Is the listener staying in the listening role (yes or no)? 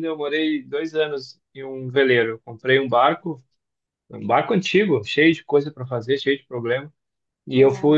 yes